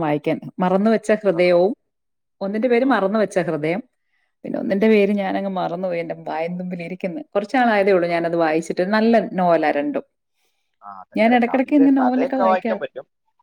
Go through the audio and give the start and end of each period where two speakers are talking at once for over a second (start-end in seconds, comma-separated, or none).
11.2-12.8